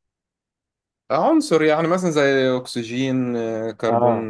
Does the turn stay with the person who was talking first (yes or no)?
no